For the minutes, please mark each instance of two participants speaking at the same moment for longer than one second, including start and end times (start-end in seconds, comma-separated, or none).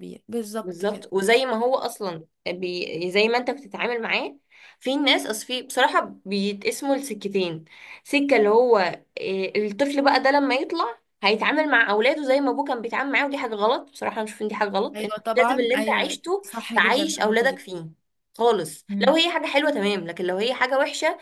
14.9-17.6